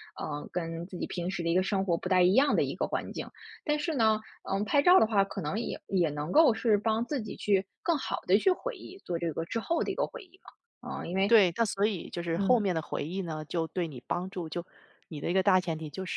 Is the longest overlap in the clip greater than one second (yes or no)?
no